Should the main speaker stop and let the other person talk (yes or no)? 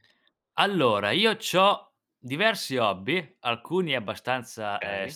no